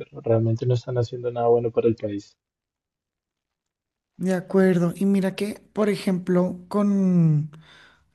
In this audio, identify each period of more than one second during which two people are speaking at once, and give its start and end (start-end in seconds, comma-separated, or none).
none